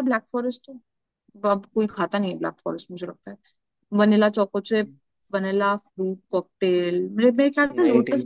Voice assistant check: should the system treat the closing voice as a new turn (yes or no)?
no